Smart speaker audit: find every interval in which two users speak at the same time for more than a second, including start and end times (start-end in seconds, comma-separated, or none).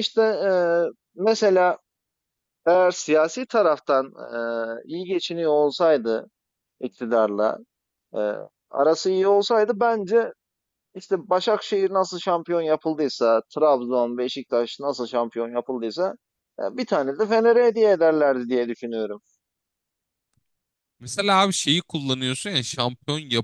none